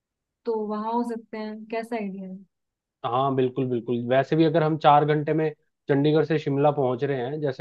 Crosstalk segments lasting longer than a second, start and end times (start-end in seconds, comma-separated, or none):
none